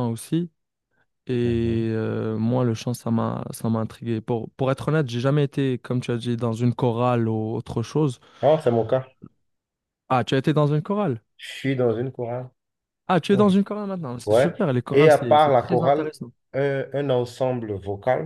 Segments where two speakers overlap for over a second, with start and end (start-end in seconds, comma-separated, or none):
14.3-16.1